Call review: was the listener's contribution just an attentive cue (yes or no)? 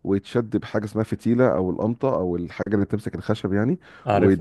yes